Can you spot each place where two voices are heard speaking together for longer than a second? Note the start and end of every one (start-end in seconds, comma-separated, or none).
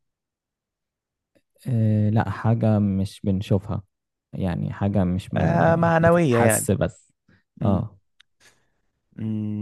5.4-6.7